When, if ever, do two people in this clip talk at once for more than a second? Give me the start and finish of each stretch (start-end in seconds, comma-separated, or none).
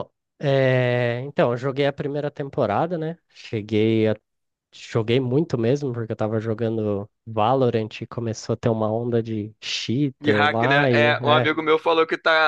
10.2-11.5